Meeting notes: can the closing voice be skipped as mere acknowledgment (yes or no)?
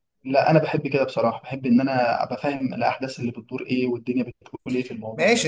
no